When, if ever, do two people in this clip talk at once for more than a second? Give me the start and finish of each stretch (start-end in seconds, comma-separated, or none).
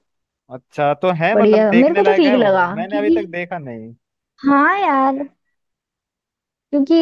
1.3-3.2